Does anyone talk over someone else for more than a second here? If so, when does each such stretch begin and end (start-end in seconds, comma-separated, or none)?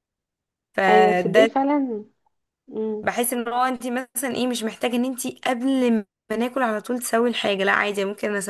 none